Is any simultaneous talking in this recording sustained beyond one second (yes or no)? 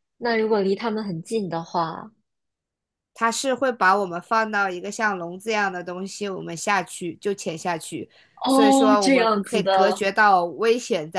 yes